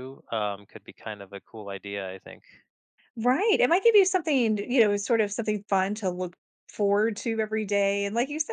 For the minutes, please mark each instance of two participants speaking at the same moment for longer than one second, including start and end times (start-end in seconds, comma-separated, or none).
none